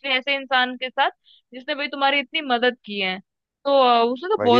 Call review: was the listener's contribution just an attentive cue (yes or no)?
yes